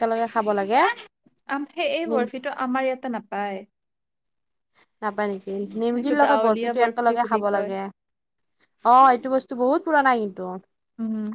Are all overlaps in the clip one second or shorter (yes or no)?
no